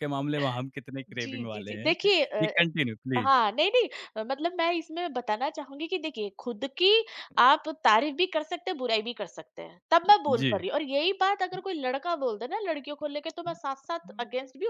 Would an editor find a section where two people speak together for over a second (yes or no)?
yes